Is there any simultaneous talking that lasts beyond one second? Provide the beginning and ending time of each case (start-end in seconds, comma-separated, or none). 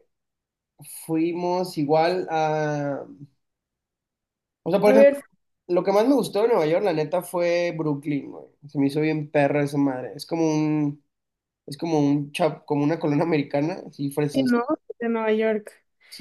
none